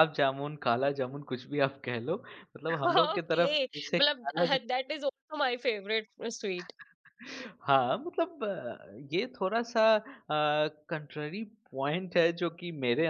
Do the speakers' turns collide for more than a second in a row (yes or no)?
yes